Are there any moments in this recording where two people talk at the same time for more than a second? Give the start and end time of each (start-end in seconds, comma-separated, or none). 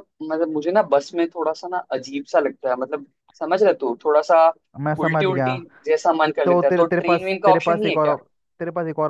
6.4-8.2